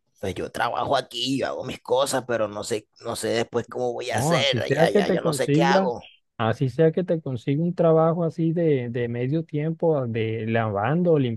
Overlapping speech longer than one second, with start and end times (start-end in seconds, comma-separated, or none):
4.1-5.9